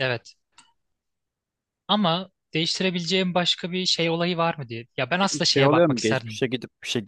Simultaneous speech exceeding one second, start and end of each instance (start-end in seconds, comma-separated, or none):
5.2-6.4